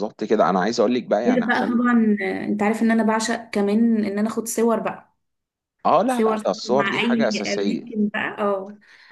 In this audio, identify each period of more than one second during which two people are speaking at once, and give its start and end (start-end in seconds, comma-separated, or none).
6.1-7.9